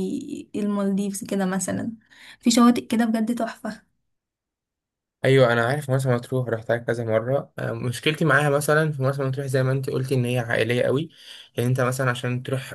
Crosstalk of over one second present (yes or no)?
no